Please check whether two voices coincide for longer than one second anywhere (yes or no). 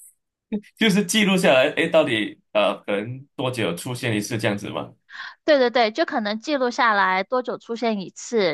no